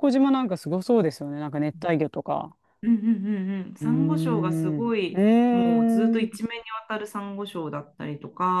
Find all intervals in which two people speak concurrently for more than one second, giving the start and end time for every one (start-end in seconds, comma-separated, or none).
3.8-5.2